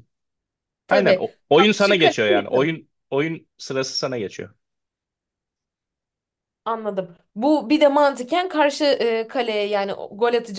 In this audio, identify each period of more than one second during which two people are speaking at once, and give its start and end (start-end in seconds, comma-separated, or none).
0.9-2.8